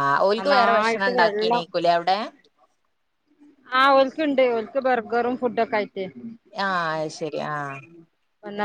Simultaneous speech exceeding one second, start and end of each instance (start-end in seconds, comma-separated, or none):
none